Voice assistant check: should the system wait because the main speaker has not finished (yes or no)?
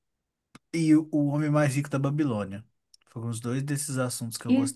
no